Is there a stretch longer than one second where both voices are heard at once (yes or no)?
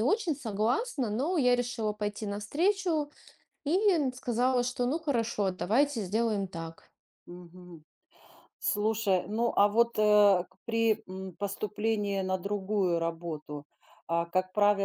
no